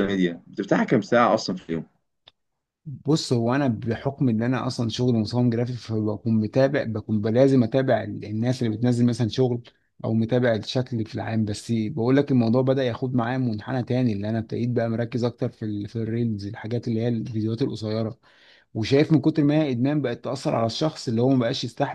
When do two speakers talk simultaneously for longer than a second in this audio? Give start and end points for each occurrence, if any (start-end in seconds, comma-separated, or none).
none